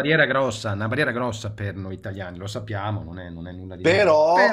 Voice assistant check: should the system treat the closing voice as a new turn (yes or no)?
yes